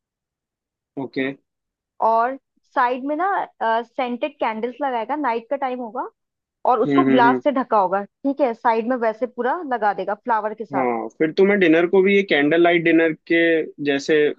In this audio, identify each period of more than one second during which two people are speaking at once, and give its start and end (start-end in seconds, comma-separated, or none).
none